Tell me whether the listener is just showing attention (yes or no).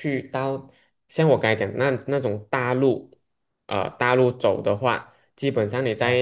yes